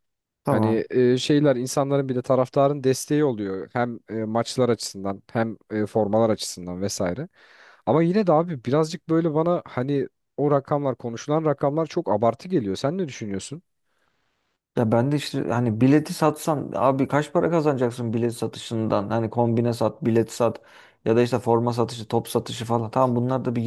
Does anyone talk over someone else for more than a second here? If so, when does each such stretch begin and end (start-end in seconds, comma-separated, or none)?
none